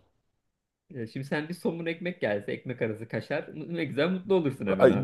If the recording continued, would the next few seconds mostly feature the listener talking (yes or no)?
yes